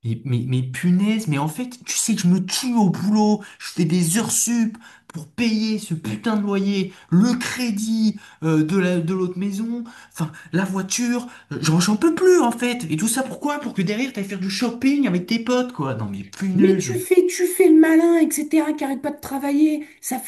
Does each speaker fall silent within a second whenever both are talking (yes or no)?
yes